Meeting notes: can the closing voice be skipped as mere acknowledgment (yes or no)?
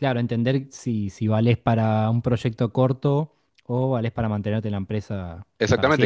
no